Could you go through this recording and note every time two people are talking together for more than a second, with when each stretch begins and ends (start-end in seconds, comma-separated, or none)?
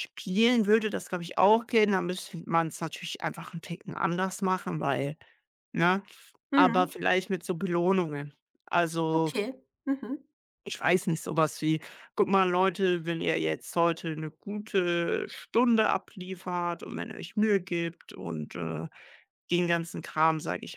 none